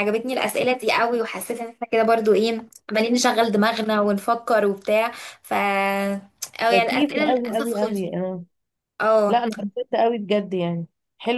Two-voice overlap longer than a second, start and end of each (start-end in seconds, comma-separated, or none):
6.7-8.1